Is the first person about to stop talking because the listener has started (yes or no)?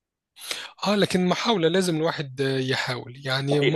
yes